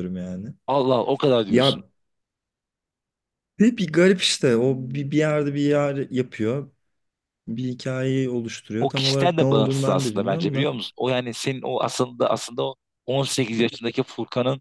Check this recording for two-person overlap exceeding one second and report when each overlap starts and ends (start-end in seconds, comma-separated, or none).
8.8-10.7